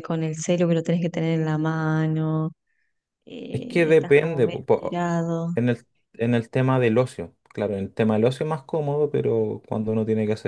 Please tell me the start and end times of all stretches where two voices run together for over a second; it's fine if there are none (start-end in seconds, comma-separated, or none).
3.5-5.1